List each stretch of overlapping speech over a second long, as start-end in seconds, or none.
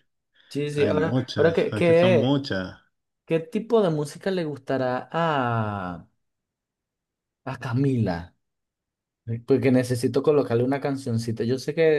0.7-2.4